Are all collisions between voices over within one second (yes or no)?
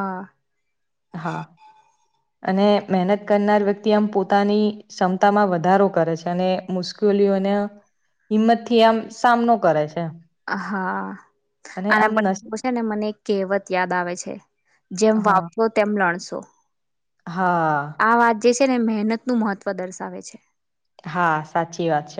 yes